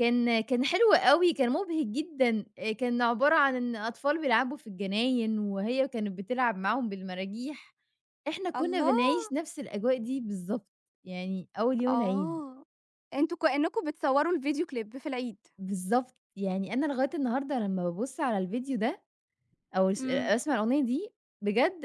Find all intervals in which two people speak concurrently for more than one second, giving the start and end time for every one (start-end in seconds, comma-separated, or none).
none